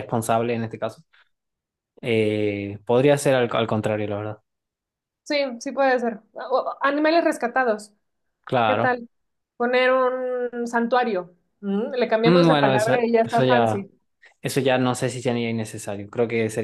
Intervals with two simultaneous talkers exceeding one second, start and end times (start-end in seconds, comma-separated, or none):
12.2-13.8